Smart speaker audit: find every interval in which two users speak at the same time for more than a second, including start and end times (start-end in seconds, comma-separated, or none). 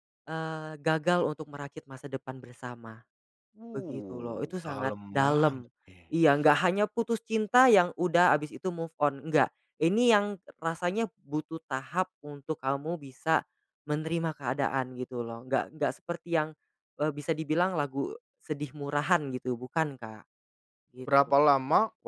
3.7-5.7